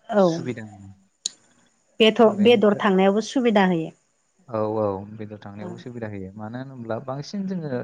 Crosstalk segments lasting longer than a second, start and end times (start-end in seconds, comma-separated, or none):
none